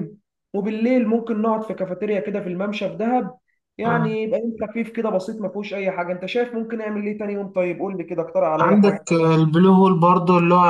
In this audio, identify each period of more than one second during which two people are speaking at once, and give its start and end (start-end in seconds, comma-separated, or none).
none